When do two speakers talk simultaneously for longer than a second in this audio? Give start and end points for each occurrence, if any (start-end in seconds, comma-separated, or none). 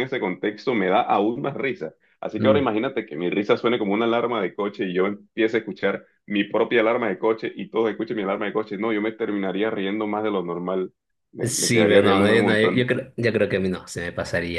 11.4-12.9